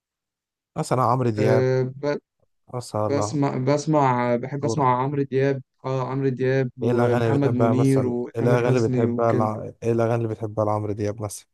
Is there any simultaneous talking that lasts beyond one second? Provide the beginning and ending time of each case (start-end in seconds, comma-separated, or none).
6.8-9.5